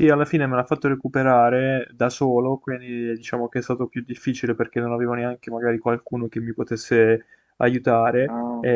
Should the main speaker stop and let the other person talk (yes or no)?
no